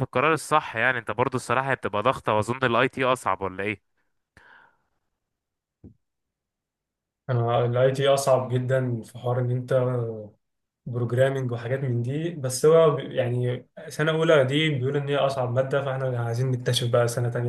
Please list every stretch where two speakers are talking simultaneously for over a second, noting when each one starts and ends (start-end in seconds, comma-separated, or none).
none